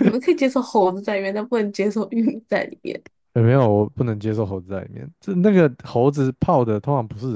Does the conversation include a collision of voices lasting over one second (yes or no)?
no